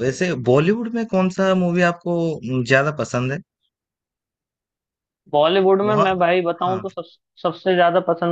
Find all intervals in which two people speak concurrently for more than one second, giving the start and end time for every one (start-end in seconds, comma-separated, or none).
none